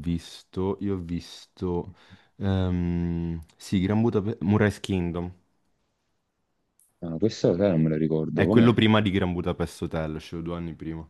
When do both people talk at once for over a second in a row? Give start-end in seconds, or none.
none